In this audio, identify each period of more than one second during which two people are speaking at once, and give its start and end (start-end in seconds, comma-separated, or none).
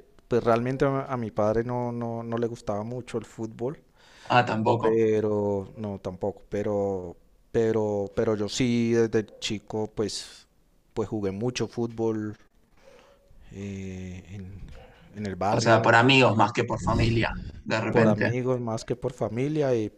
none